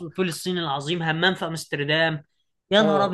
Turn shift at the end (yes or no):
yes